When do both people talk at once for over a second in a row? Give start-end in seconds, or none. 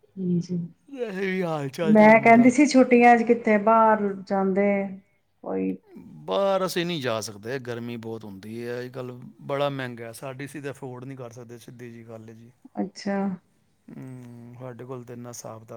none